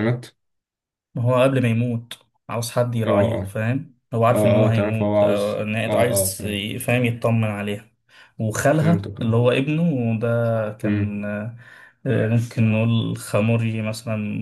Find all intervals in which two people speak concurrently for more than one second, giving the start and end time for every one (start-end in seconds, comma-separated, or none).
4.3-6.6